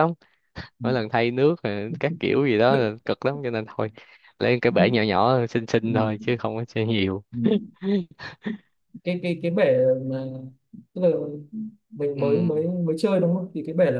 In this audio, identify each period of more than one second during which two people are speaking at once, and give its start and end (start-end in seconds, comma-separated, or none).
none